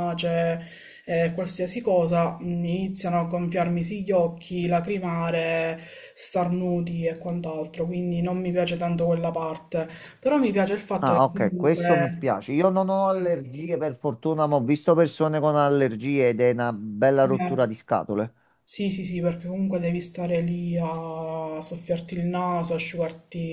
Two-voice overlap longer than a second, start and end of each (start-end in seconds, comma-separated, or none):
11.0-12.3